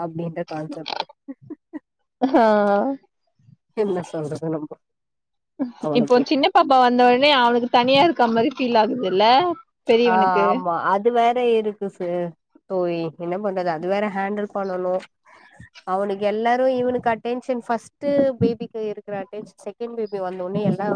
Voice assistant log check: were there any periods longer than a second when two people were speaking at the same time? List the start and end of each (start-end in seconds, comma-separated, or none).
none